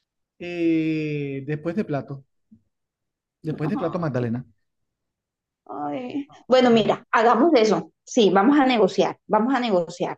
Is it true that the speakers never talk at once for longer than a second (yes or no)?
yes